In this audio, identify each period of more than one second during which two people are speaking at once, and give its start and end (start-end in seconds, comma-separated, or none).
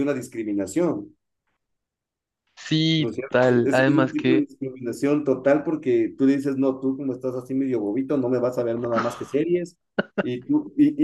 3.0-4.5